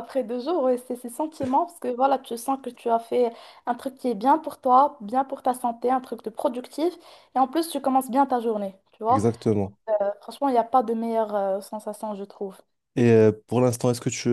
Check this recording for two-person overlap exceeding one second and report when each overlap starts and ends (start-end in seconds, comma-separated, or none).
none